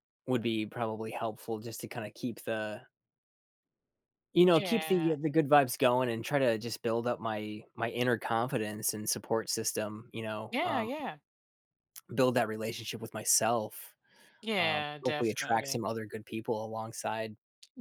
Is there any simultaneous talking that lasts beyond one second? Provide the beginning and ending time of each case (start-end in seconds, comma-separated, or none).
14.6-15.8